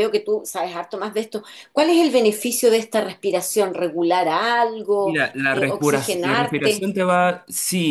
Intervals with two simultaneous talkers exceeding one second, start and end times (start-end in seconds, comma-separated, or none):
5.0-6.9